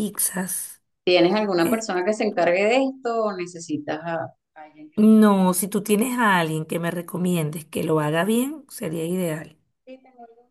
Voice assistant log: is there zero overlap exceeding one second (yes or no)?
yes